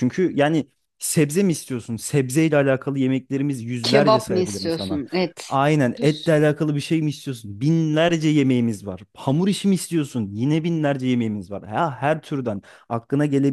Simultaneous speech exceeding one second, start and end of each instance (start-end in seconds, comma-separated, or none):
3.8-5.0